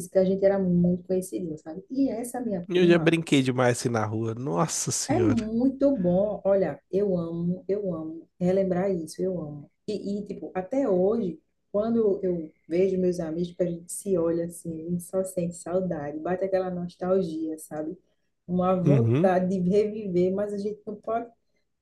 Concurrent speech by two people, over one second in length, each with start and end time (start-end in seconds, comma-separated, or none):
none